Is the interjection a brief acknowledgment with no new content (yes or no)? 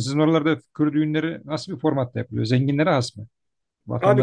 no